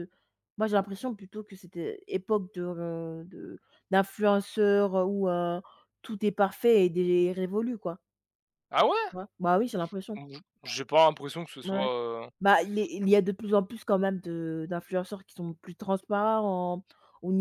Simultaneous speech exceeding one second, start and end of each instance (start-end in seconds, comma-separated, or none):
none